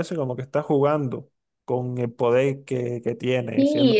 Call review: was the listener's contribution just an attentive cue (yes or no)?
no